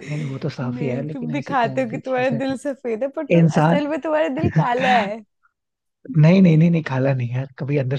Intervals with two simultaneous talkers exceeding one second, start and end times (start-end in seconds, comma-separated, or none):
0.6-2.4